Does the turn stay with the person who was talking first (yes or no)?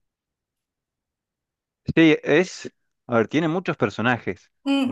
no